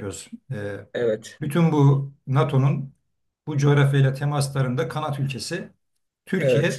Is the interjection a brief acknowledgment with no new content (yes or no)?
yes